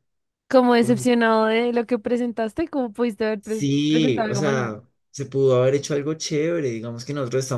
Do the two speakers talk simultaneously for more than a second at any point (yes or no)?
yes